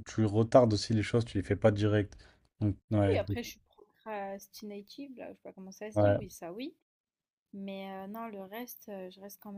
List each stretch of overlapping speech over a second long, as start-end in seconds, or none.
none